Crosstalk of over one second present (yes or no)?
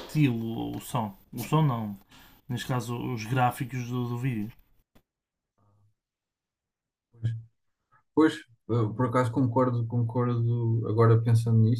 no